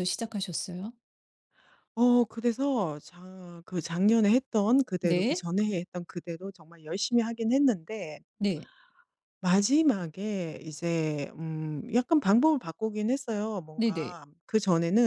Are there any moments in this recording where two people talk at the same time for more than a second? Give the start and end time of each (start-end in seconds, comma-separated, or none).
none